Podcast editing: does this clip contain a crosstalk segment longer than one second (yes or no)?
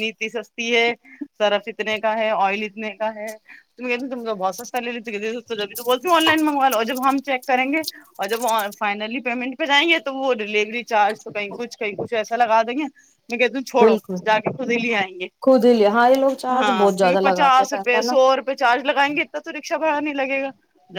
yes